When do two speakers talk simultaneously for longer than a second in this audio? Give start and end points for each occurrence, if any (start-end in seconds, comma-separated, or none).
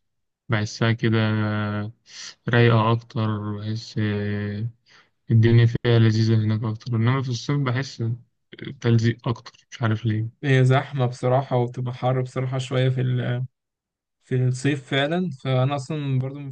none